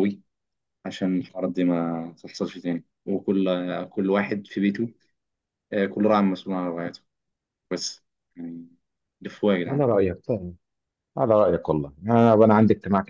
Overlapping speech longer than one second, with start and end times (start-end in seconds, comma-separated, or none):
none